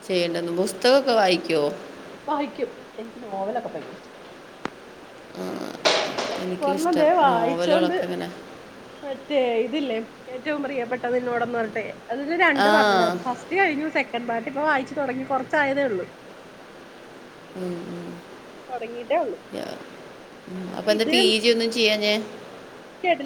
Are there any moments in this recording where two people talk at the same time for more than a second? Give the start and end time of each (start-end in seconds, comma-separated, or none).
6.7-8.0